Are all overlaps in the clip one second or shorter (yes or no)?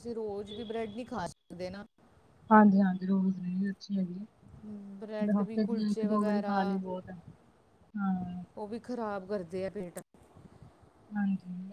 no